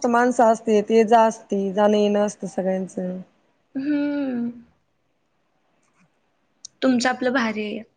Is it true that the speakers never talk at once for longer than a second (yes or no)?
yes